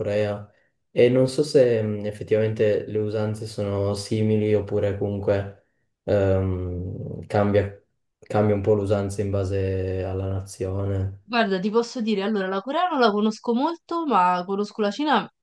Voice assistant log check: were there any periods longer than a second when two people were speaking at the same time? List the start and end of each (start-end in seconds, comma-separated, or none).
none